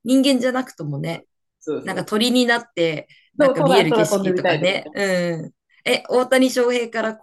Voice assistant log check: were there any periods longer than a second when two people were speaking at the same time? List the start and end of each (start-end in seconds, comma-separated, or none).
3.4-4.9